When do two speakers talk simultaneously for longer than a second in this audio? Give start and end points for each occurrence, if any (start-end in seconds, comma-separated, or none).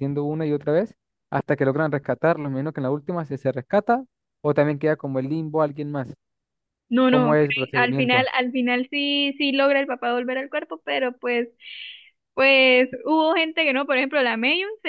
7.1-8.3